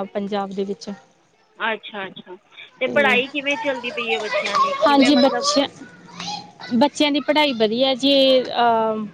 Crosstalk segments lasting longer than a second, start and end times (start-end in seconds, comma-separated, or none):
none